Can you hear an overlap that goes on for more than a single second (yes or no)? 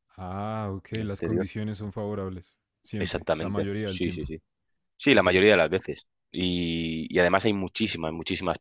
yes